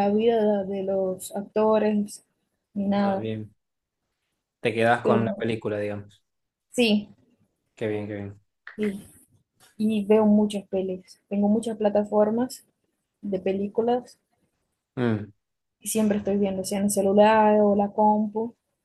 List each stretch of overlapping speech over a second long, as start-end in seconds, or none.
none